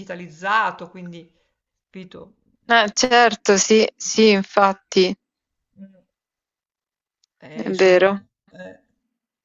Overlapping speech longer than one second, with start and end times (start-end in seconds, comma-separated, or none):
none